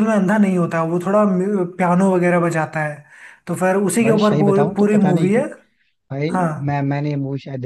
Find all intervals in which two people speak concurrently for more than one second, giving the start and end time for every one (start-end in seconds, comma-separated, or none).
4.0-5.4